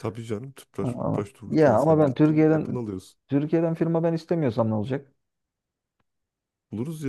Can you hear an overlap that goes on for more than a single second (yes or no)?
yes